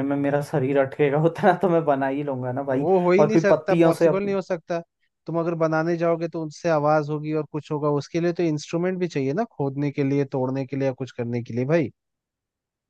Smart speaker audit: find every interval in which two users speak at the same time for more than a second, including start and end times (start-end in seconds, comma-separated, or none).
2.7-4.4